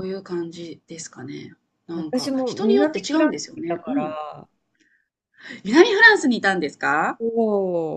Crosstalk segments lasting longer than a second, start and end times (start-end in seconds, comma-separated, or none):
1.9-4.2